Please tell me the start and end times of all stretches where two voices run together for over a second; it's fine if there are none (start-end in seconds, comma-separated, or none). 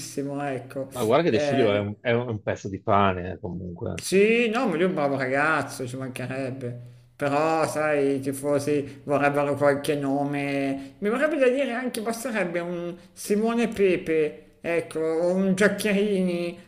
none